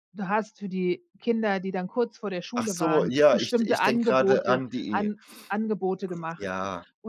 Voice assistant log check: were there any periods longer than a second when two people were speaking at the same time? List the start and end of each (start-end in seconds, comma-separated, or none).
2.5-5.1